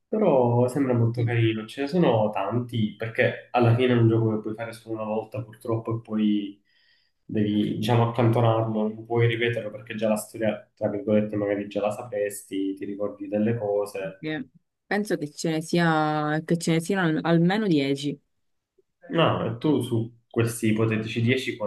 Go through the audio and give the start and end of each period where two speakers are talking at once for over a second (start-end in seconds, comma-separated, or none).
none